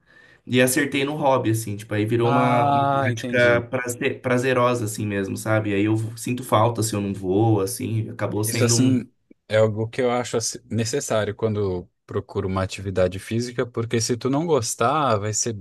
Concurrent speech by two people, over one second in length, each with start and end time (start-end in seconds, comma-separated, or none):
2.2-3.6